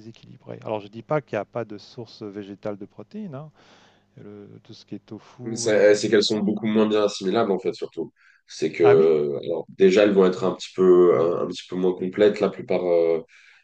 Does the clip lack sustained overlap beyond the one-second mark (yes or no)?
yes